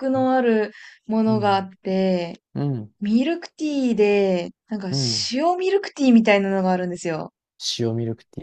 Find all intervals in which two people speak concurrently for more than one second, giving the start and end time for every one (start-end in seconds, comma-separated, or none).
none